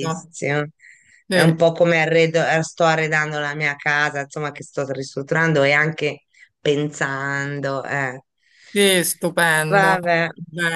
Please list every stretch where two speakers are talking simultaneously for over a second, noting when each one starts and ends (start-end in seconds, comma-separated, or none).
none